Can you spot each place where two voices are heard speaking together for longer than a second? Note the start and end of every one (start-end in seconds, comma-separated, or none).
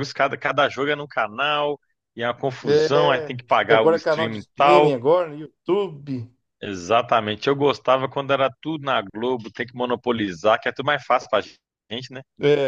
2.6-5.0